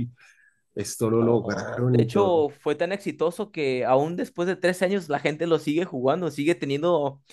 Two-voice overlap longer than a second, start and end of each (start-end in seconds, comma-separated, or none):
1.2-2.5